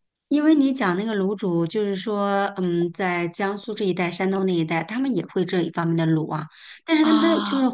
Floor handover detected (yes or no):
no